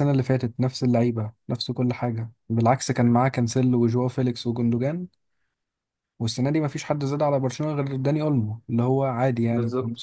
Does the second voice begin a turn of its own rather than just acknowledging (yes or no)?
no